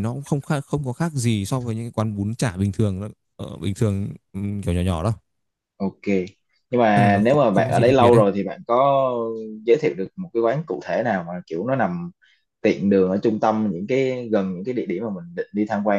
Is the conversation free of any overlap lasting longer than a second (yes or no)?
no